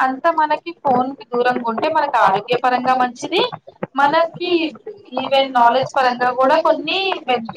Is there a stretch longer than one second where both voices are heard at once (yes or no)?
yes